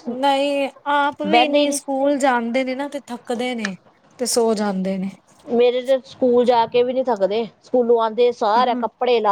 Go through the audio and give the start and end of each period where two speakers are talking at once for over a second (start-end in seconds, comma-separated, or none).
none